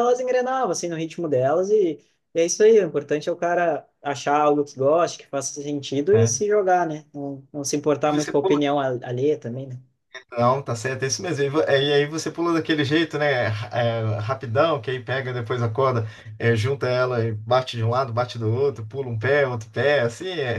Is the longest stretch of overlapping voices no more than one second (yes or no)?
yes